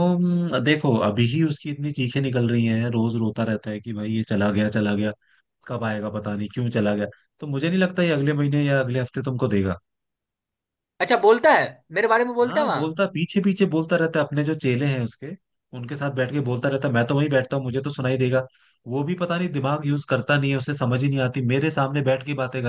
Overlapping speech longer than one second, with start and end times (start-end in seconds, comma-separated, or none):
none